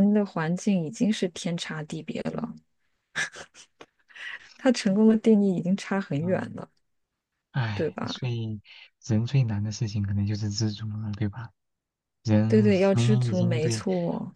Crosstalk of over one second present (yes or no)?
yes